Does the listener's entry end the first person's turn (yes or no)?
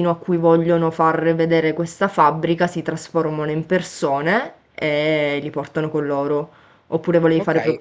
yes